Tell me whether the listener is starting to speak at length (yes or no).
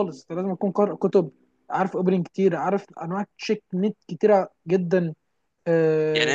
yes